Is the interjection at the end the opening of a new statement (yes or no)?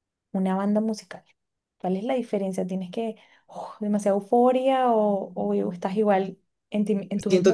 yes